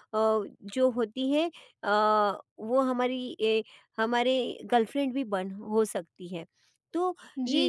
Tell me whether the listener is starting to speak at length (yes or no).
yes